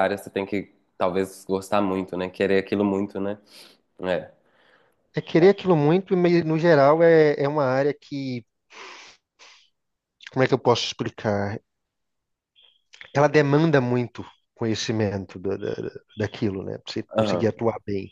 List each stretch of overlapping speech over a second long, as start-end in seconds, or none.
none